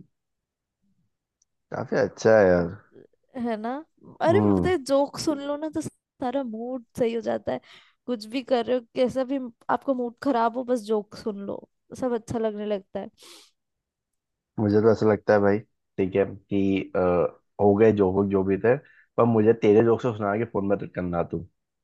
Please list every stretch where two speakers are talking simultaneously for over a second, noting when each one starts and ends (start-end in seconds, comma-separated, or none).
none